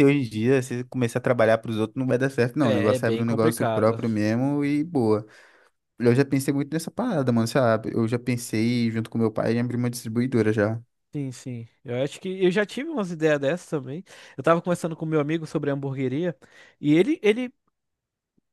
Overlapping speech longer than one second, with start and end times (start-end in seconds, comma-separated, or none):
2.6-4.0